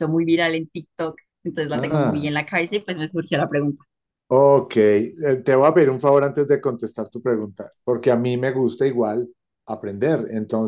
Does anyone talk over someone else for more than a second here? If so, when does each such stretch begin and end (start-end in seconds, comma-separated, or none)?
none